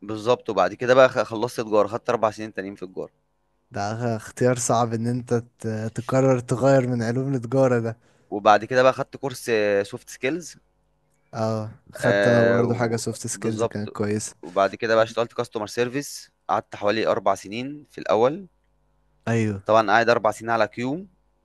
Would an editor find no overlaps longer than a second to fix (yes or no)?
no